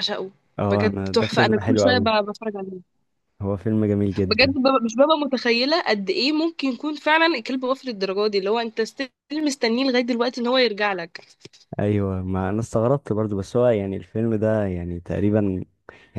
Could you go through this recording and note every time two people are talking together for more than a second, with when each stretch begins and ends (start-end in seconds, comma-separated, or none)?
0.7-2.1